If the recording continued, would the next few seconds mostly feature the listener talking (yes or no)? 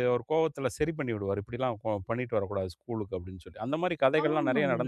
yes